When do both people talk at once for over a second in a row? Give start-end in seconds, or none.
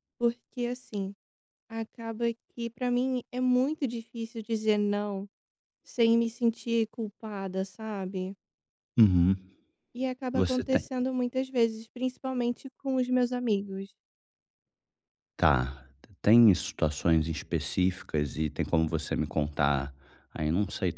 none